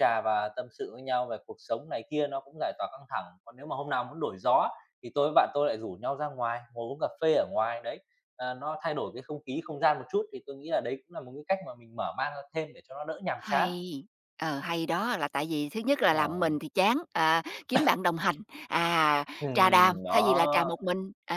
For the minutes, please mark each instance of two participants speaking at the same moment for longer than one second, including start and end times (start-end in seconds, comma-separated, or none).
19.4-20.7